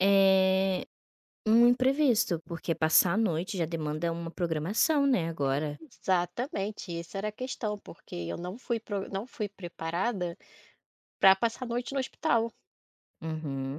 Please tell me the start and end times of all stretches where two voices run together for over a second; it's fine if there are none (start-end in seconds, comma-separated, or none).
none